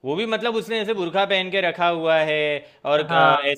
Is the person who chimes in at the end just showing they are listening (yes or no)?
yes